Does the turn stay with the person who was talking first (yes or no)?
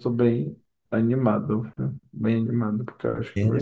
no